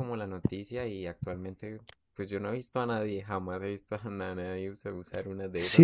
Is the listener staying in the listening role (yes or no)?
no